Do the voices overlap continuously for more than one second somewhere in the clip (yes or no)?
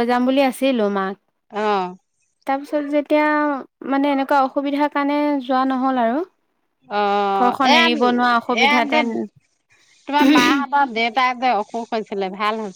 yes